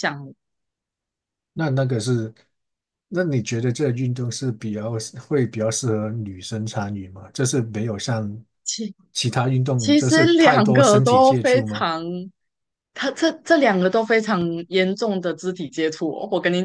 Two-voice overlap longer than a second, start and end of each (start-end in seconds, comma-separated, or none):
9.8-11.9